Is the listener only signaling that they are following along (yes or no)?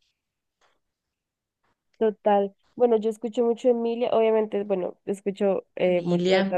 yes